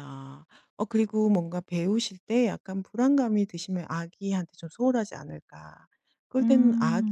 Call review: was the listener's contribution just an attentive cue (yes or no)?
yes